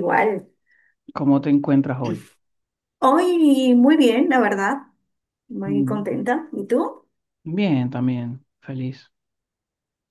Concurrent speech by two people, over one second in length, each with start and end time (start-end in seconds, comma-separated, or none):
none